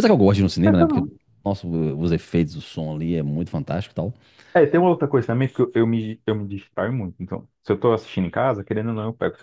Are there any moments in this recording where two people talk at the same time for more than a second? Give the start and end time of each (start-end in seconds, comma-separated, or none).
none